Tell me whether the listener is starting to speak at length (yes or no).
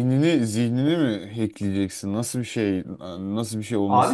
yes